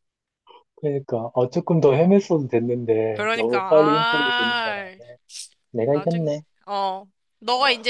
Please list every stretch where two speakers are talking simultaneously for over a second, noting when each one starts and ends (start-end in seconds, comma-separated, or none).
3.1-4.8